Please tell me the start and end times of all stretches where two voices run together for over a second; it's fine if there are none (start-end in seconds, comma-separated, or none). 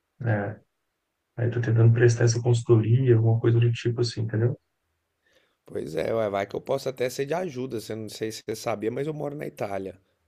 none